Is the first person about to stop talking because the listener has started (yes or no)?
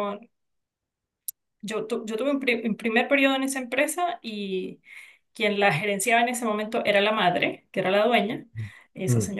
no